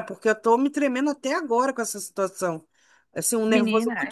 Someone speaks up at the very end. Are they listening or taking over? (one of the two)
listening